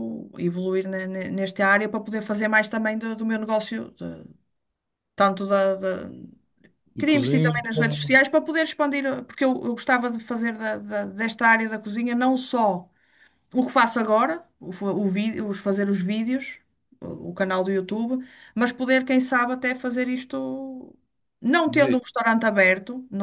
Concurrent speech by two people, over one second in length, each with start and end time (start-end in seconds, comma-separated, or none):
7.0-8.2